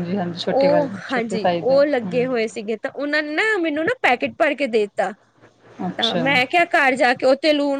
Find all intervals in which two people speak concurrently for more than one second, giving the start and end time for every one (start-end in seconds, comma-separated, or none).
0.6-2.3